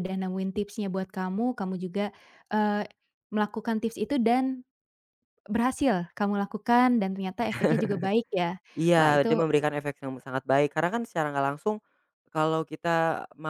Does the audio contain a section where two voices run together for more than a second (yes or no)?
no